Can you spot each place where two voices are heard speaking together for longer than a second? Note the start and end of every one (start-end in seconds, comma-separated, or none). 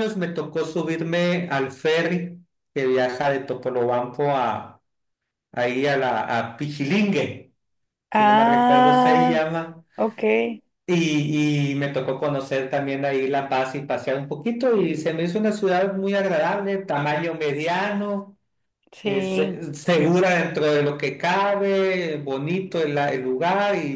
8.1-9.5